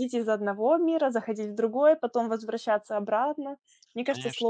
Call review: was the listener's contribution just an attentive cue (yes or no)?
no